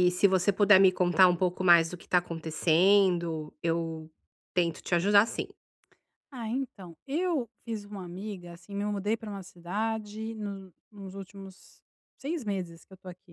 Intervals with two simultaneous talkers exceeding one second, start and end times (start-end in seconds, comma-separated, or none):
none